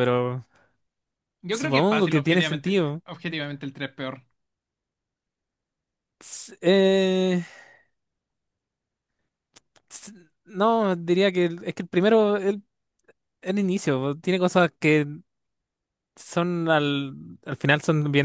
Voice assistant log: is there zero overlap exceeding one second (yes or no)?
no